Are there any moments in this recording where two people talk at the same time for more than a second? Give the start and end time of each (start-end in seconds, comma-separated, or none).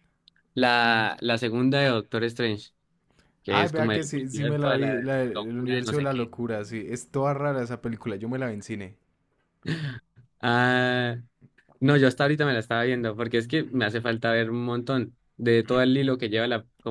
3.5-6.3